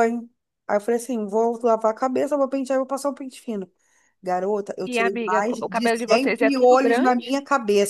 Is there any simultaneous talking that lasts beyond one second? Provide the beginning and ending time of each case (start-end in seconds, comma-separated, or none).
4.8-7.2